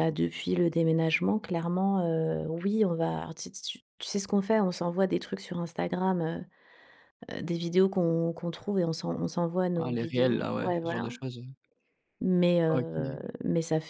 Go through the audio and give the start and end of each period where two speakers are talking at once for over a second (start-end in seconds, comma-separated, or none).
9.8-11.1